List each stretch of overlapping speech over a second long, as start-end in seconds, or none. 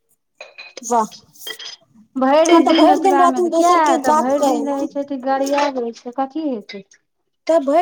2.5-4.9